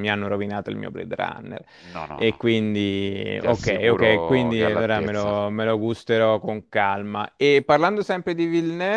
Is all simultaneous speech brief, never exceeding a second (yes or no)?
no